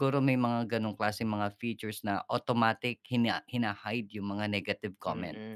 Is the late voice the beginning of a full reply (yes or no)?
yes